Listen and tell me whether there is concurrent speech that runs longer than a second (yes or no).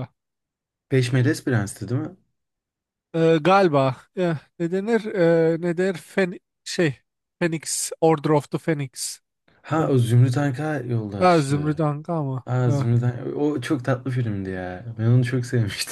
no